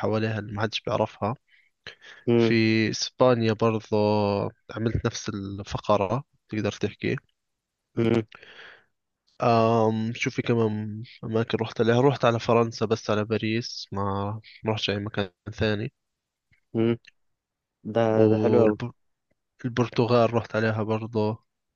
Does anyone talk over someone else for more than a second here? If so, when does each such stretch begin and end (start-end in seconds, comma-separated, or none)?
none